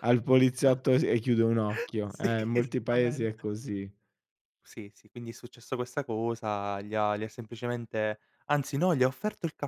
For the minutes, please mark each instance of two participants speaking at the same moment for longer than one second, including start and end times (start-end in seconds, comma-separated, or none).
2.1-3.5